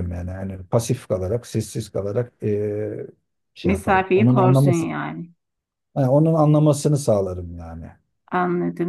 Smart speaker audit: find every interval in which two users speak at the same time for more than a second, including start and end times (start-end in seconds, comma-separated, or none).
3.6-4.9